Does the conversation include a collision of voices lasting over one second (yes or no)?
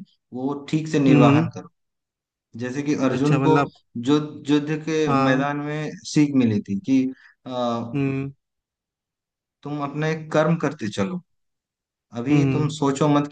no